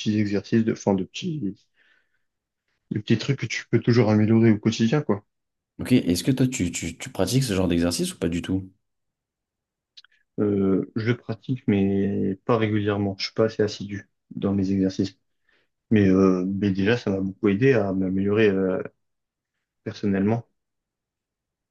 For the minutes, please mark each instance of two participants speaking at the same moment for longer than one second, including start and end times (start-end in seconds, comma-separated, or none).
none